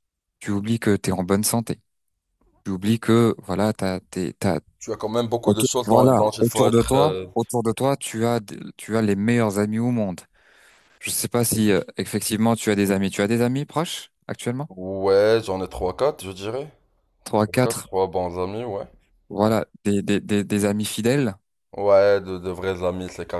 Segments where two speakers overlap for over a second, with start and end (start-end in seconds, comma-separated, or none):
5.4-7.2